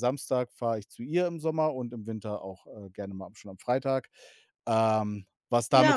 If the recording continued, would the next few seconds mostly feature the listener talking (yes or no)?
yes